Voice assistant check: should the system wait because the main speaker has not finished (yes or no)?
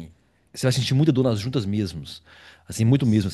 yes